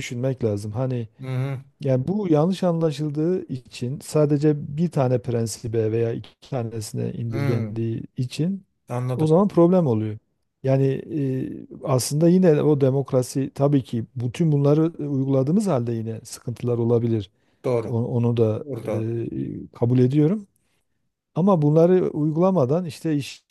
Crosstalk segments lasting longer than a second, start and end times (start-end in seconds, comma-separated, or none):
none